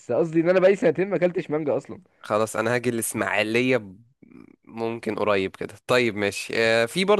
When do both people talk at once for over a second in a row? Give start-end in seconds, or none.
none